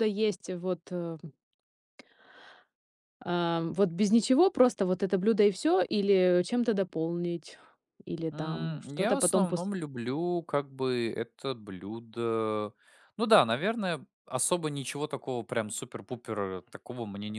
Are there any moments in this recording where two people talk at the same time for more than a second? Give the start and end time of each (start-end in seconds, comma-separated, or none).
8.3-9.7